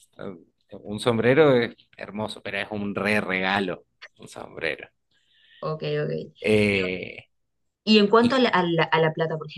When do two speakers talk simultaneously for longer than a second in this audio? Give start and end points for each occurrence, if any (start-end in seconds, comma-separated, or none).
none